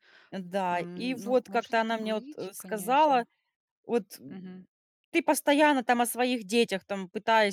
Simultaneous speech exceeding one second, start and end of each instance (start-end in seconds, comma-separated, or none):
0.7-3.2